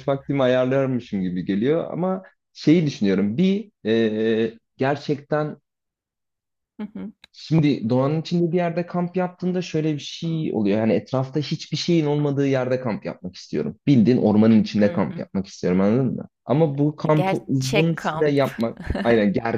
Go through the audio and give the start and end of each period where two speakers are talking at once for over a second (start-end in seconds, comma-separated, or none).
17.1-18.6